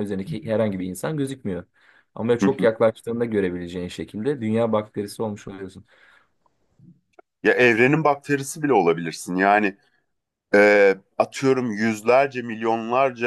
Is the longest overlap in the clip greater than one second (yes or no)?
no